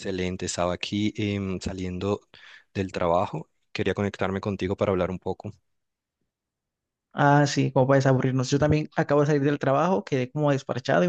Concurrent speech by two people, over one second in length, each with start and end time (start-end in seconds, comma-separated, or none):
none